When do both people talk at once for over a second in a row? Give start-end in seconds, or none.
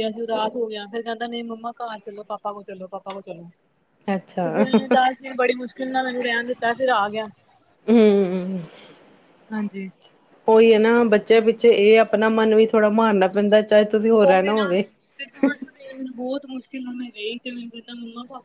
none